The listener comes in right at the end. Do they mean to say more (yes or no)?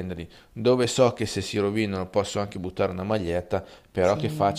no